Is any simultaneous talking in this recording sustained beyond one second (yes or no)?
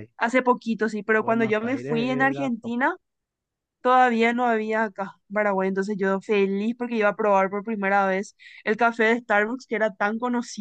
yes